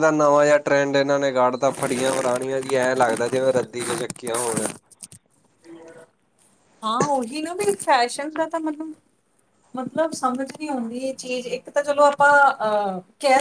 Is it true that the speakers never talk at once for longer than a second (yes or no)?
yes